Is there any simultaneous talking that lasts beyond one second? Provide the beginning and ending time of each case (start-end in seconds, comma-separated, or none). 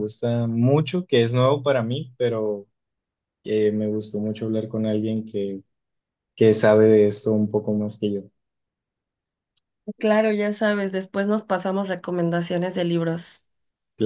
none